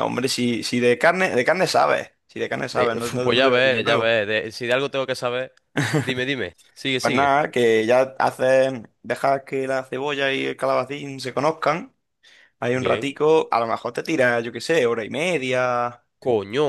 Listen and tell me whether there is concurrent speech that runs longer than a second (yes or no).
yes